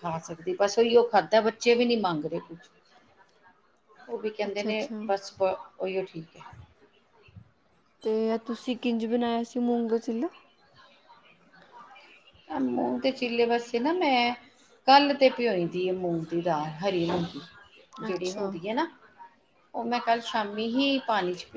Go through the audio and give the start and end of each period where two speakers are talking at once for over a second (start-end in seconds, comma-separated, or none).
none